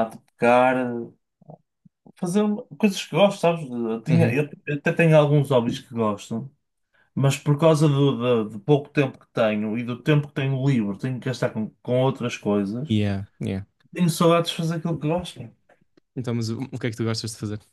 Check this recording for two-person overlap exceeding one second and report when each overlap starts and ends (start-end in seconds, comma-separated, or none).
none